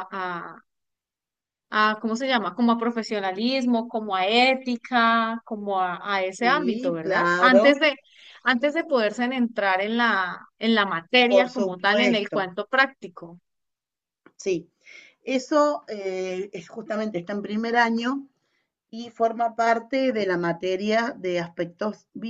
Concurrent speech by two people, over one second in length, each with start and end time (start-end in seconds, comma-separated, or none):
6.4-7.8, 11.2-12.5